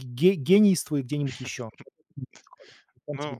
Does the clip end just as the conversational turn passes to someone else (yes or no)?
yes